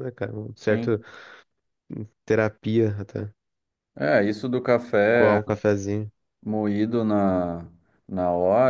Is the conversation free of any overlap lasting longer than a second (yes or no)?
yes